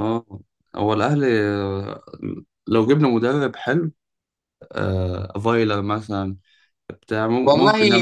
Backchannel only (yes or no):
no